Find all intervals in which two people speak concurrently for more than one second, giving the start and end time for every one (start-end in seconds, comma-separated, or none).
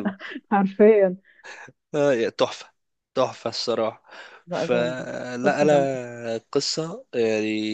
4.5-5.9